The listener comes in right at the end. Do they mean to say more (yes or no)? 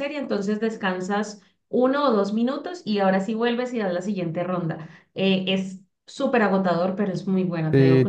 yes